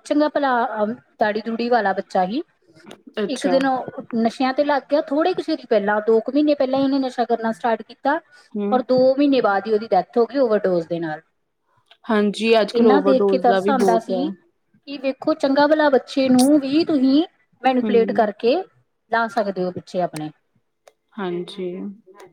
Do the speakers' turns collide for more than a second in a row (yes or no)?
yes